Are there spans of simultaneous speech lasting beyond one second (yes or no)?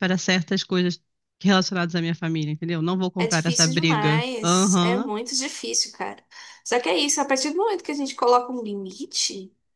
yes